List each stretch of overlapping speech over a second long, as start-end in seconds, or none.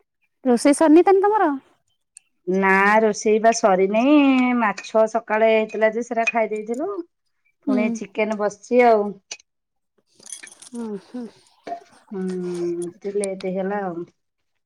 none